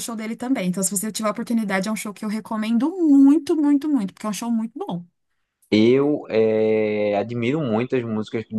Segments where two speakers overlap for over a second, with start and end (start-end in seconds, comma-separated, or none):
none